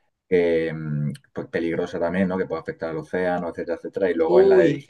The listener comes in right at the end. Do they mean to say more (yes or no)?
no